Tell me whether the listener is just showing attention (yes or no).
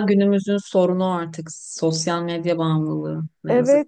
no